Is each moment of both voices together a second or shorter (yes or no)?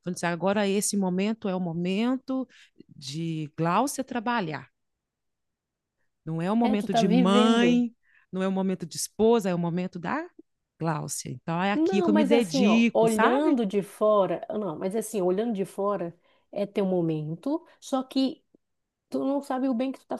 no